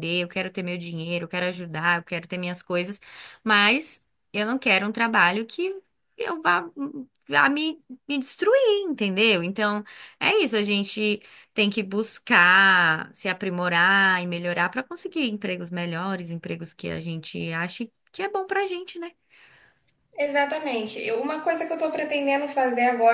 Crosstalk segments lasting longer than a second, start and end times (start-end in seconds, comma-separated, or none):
none